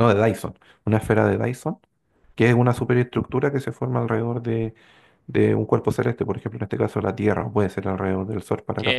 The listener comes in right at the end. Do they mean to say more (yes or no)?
yes